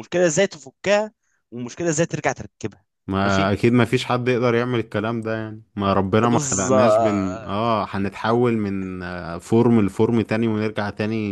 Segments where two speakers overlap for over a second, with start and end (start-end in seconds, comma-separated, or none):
6.2-7.7